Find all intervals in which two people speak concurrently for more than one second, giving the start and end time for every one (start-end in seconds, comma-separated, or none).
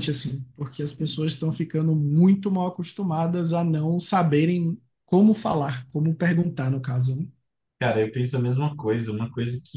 none